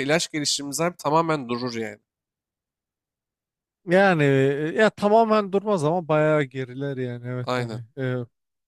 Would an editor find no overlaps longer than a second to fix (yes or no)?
yes